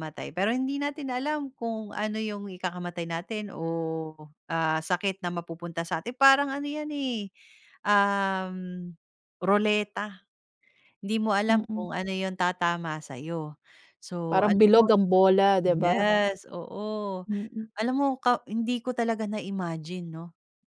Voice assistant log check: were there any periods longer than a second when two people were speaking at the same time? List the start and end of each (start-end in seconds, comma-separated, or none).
none